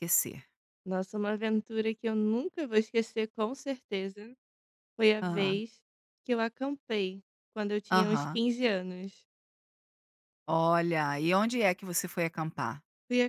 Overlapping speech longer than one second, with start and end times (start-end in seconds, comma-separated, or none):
none